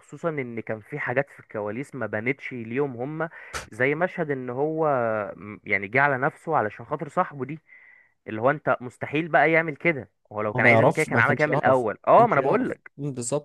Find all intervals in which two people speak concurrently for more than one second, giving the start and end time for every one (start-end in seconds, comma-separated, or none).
10.6-12.9